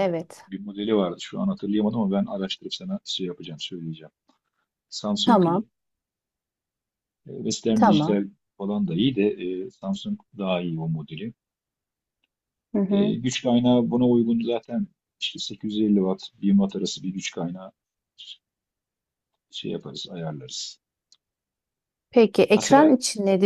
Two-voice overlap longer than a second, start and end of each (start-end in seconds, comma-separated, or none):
none